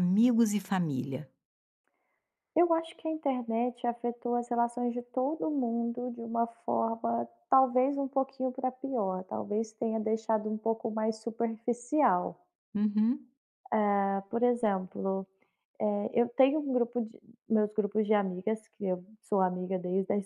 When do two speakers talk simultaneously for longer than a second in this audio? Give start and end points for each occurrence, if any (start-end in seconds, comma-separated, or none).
none